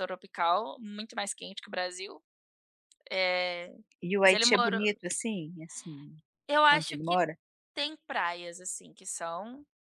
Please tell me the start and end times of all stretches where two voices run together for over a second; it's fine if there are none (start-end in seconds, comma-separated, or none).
none